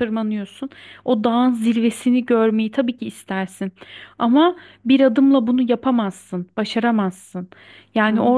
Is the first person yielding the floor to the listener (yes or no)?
no